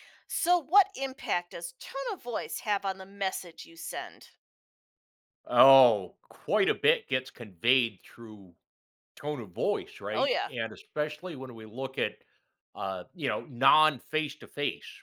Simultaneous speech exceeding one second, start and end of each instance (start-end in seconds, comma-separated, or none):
none